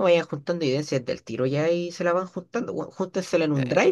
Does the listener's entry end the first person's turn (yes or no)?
no